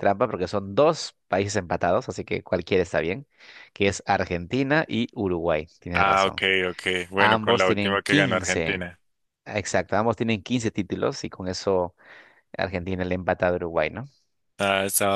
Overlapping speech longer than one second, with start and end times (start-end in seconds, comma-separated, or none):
7.2-8.8